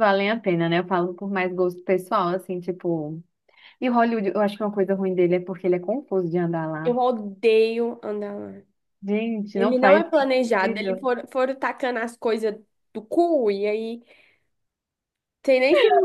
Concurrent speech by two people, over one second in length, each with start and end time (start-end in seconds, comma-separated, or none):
9.5-11.1